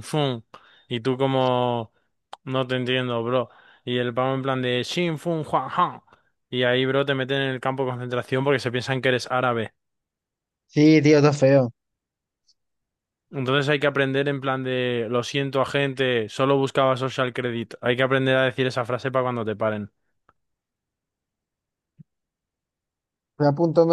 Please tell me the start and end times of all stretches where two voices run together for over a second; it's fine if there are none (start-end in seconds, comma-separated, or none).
none